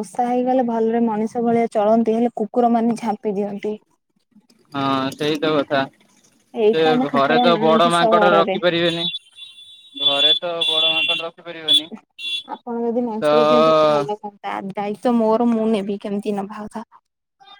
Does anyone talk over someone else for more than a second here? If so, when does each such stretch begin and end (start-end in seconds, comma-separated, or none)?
6.6-8.6